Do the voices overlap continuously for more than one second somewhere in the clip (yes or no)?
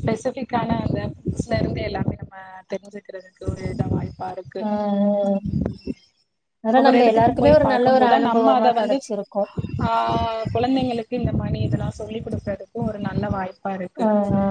yes